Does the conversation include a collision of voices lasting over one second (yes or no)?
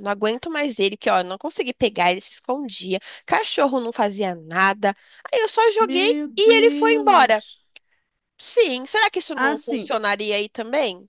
yes